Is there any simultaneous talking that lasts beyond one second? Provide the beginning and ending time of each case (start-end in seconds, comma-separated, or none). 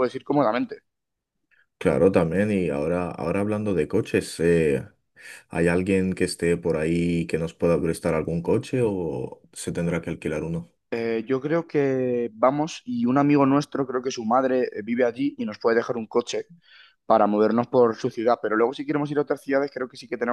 none